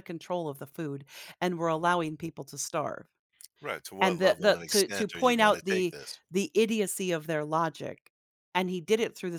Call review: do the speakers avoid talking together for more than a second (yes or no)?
no